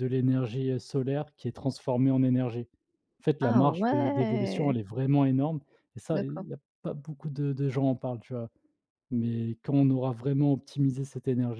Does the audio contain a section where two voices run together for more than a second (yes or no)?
yes